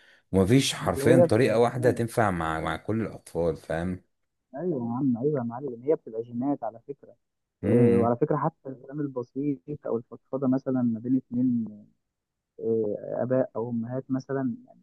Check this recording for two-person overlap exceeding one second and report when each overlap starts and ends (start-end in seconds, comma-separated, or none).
0.8-2.0